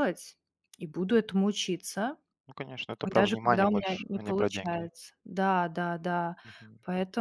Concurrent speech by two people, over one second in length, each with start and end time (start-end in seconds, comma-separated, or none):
3.1-4.9